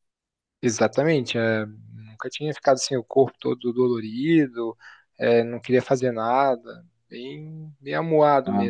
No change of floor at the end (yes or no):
no